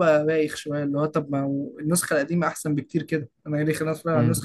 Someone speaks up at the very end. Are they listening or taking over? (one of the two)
listening